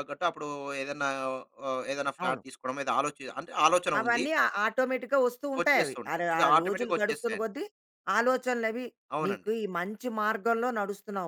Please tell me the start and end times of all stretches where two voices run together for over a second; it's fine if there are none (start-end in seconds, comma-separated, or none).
5.6-7.5